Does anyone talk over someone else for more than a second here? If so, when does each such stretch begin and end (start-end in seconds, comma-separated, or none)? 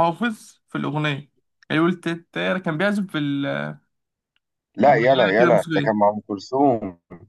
4.9-6.1